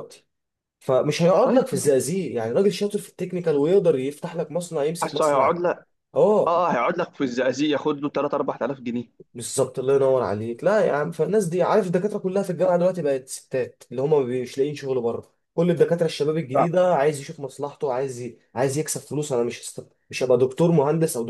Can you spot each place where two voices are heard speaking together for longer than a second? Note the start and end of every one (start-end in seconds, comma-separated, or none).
none